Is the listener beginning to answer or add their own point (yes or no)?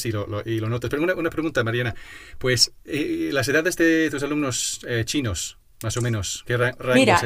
yes